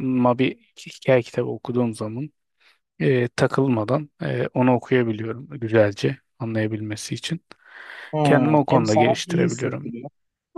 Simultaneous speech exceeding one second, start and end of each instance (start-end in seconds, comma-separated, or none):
8.2-9.9